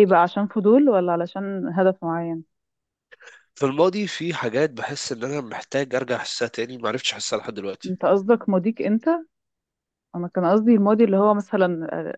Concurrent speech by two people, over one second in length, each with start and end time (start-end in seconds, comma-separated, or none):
none